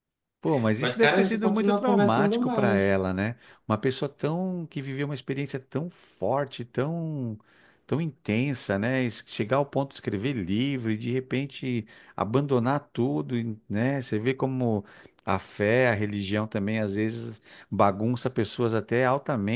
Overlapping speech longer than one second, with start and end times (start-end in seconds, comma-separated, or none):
0.8-3.0